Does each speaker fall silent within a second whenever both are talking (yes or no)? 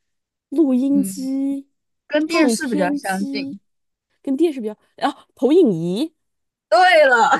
no